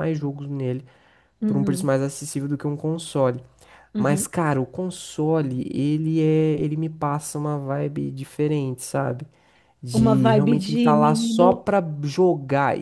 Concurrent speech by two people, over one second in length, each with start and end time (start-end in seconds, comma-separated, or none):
9.9-11.6